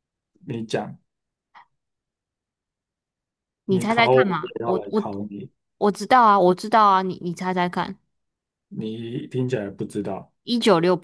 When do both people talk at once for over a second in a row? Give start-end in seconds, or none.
3.7-5.1